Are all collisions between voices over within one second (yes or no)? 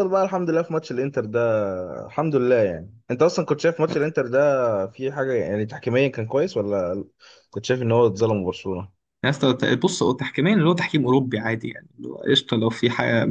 yes